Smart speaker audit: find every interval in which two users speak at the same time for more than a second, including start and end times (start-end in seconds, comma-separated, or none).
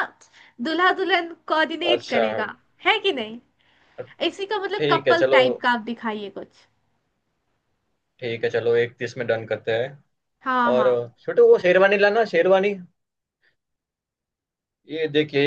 none